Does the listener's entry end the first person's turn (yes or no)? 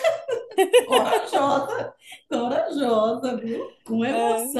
no